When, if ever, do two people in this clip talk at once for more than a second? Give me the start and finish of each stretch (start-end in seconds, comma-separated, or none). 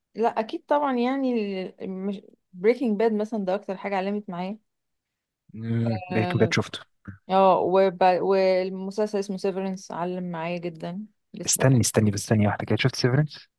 none